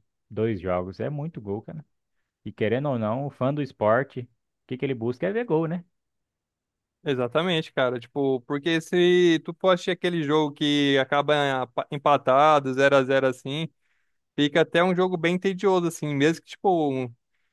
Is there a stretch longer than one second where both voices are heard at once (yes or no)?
no